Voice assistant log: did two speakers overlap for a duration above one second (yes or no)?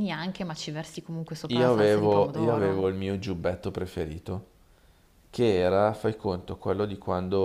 yes